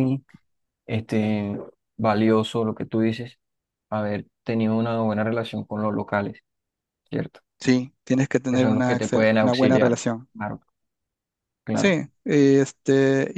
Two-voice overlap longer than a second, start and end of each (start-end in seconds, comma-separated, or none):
8.5-10.3